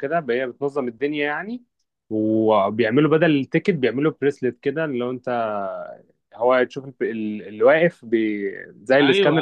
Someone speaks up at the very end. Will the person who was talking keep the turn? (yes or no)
no